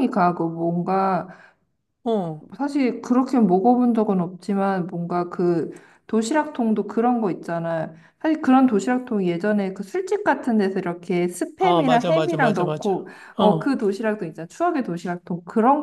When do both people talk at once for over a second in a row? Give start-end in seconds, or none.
11.6-13.7